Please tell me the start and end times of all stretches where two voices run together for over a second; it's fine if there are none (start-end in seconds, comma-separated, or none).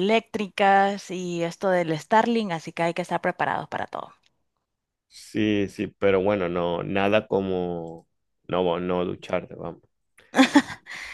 none